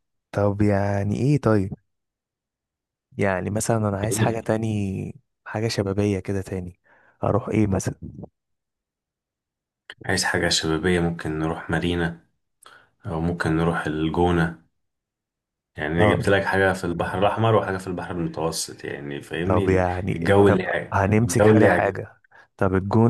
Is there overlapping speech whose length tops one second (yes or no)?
yes